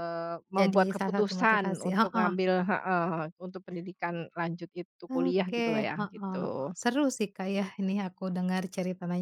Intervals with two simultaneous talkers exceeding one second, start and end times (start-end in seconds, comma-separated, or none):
0.6-2.3, 5.1-6.7